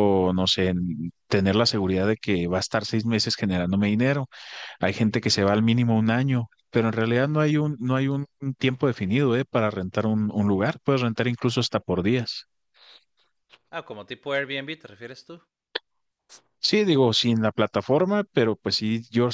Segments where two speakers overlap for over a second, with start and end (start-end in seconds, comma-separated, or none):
none